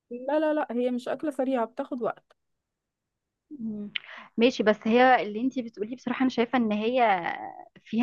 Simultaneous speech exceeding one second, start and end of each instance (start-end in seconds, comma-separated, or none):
none